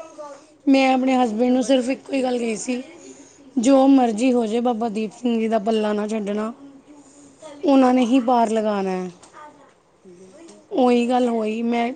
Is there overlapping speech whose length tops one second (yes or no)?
yes